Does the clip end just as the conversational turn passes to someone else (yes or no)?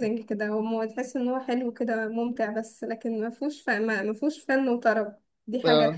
no